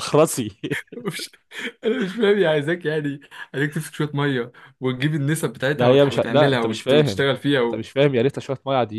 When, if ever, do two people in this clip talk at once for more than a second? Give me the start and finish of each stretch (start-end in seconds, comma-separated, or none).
5.7-7.8